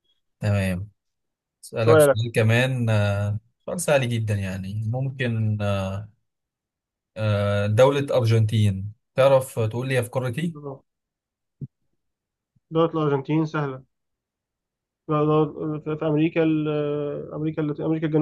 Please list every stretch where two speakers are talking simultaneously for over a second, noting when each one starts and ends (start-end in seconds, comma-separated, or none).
none